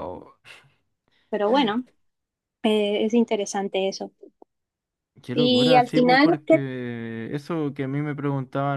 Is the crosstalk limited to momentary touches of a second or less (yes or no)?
no